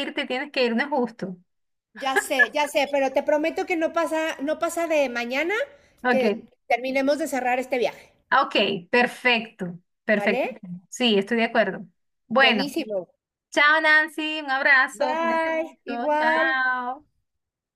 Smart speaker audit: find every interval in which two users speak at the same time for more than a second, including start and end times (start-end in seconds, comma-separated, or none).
15.0-16.6